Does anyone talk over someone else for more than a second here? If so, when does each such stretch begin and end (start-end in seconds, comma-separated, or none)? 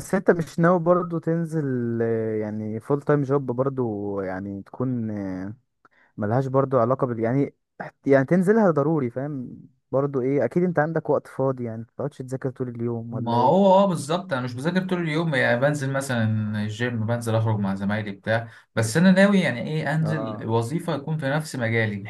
none